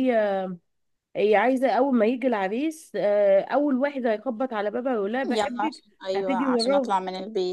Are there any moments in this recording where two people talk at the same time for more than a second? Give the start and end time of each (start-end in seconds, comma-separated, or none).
5.4-6.9